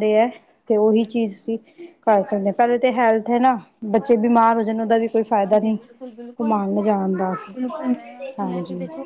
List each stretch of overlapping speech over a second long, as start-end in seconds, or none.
none